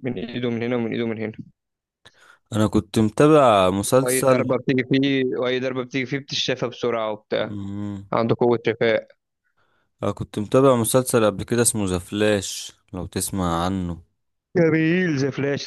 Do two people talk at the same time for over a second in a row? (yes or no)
no